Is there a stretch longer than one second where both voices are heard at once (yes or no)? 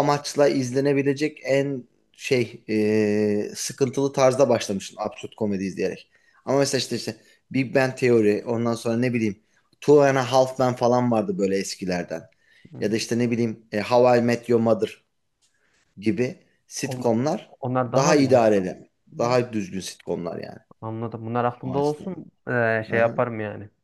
no